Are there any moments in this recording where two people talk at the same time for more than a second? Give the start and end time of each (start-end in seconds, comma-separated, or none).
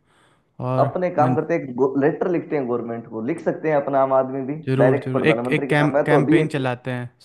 4.7-6.6